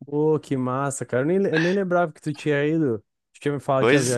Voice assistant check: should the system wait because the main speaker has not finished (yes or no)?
yes